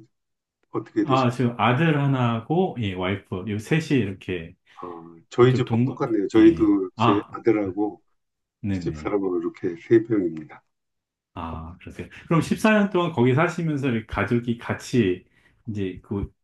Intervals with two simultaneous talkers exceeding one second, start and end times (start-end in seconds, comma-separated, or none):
5.4-7.3